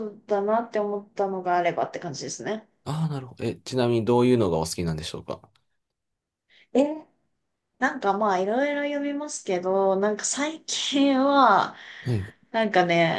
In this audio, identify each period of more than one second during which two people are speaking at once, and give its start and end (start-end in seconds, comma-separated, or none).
none